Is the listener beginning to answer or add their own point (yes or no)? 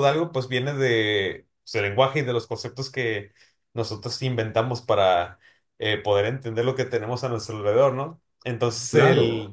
no